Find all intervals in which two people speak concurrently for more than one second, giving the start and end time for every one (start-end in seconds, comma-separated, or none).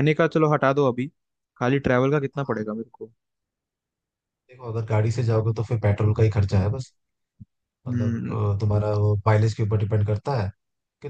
none